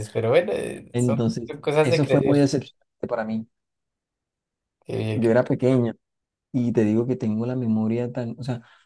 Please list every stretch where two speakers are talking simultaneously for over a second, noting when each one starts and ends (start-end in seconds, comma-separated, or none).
0.9-2.5